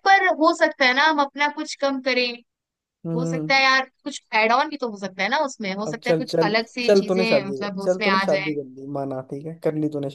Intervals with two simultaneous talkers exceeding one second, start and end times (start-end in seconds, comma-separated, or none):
5.8-8.4